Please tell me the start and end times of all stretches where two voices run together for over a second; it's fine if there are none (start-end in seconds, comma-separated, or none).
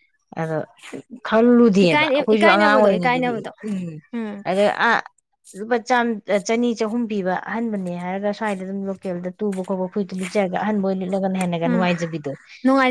1.8-3.5